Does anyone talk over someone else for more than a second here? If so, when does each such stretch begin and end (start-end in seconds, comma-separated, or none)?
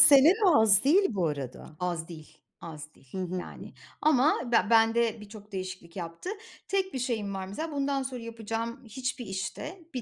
none